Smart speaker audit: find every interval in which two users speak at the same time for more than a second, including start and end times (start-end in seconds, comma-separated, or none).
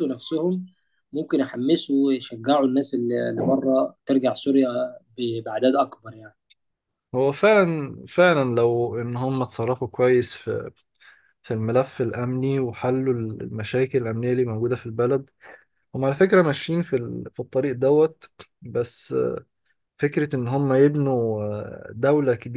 none